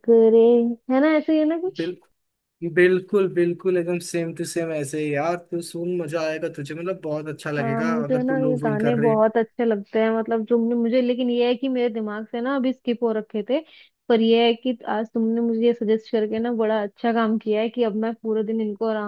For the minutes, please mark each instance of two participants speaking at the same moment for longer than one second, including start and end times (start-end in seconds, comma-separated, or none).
7.6-9.2